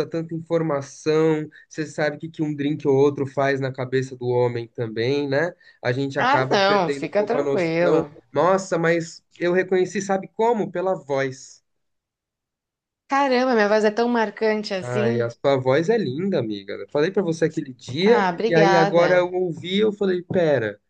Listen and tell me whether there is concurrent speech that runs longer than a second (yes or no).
yes